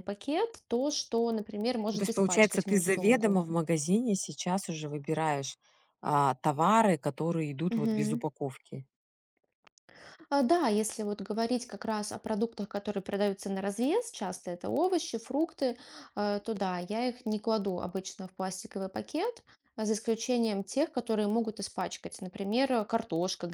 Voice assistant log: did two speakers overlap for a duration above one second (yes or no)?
yes